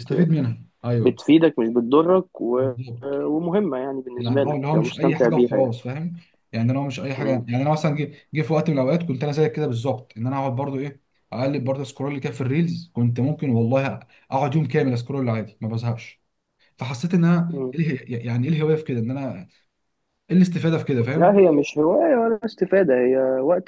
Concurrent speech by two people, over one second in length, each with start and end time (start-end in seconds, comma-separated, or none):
4.2-5.8